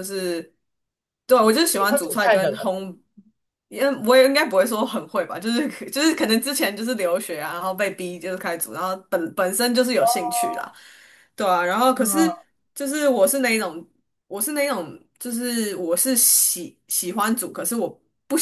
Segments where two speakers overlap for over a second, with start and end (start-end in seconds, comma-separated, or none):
1.4-2.7